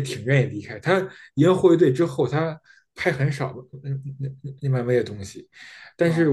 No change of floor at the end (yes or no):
yes